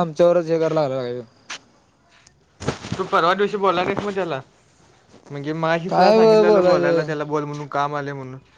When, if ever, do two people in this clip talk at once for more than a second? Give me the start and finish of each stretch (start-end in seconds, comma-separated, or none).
5.9-7.1